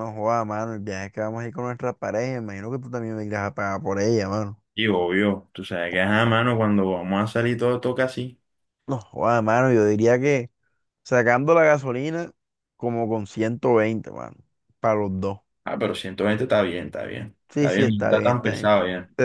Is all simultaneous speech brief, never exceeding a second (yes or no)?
no